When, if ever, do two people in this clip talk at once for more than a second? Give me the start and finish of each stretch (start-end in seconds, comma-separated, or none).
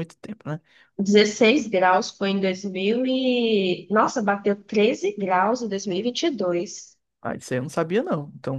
none